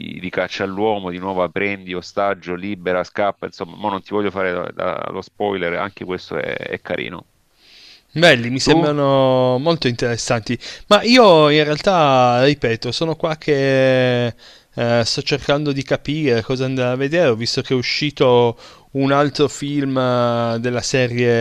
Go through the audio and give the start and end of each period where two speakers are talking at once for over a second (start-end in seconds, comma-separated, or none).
none